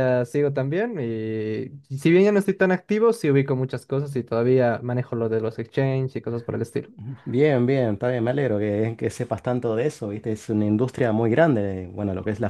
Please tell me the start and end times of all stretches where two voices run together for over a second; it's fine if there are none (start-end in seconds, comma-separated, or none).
none